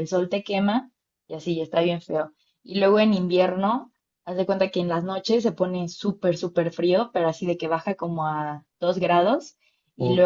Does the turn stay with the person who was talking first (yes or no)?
yes